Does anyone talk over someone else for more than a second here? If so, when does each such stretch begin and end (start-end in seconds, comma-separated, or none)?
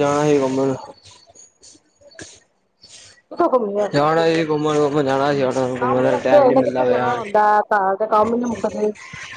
5.8-7.2